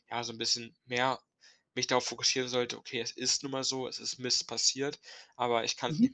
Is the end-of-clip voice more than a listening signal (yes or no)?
no